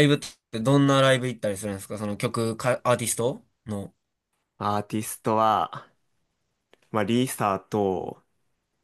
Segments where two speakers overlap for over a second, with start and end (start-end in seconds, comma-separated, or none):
none